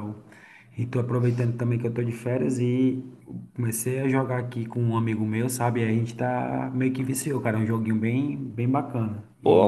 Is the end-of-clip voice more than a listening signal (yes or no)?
yes